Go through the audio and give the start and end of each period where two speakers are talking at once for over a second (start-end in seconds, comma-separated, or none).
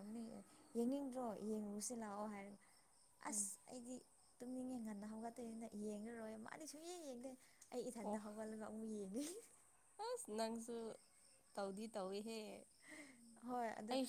none